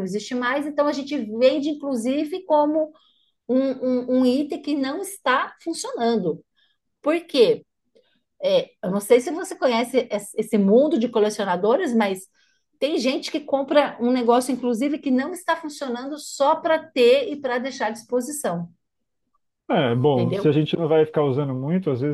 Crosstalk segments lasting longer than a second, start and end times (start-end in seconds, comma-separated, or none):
none